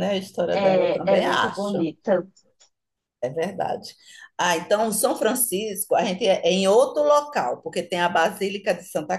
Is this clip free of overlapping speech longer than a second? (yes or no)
no